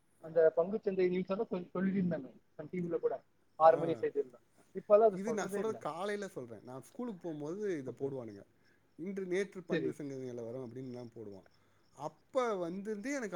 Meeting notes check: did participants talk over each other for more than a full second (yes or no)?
no